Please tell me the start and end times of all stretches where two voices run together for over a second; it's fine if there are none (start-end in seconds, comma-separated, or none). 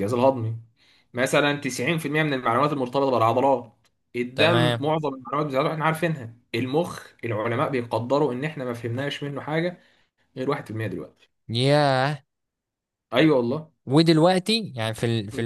none